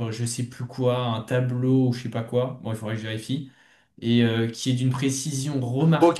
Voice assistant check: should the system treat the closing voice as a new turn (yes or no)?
yes